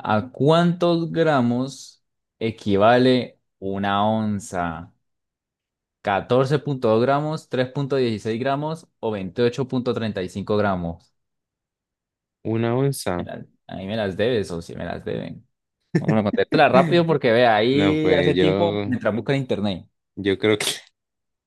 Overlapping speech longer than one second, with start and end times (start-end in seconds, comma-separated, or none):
17.7-19.0